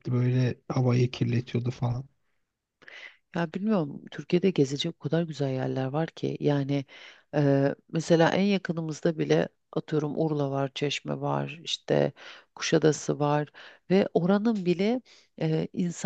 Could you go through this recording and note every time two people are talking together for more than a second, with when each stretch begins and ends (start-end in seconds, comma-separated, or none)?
none